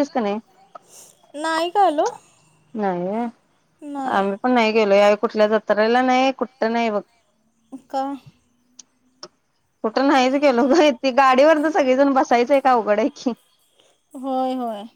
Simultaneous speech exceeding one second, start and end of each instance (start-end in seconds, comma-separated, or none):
none